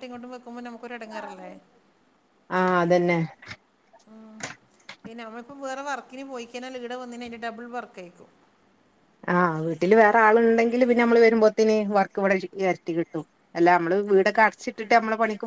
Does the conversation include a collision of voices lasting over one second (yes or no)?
no